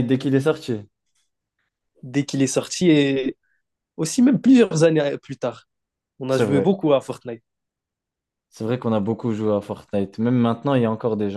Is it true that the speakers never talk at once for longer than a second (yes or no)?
yes